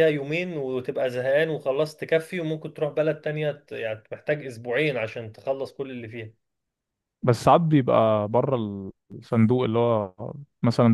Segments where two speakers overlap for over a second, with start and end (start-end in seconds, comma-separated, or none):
none